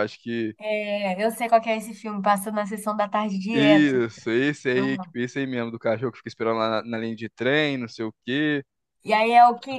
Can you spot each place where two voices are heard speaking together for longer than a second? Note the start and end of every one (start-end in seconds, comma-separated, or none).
none